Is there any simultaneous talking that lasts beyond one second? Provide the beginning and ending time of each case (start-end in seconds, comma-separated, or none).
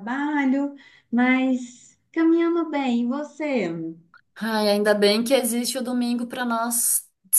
none